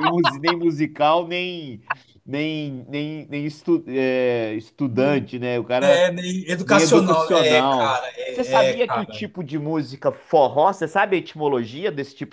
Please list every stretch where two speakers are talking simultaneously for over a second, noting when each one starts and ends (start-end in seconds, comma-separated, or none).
6.6-9.3